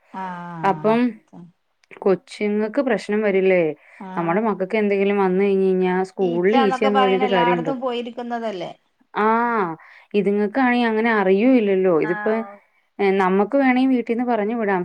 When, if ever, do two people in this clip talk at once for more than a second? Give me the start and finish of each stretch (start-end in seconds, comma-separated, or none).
6.3-7.7